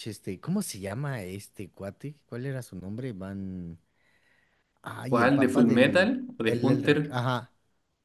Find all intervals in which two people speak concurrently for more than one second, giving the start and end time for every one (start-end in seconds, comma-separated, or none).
5.1-7.2